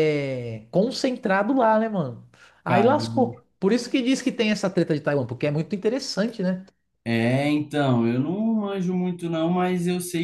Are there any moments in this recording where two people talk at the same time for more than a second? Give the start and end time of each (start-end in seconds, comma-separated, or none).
none